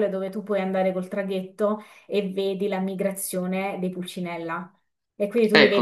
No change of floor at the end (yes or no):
yes